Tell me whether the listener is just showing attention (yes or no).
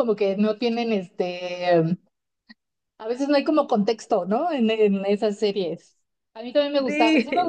yes